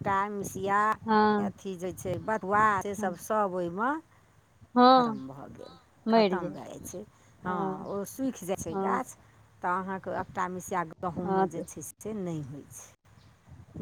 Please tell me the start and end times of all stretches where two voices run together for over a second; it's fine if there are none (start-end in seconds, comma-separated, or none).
none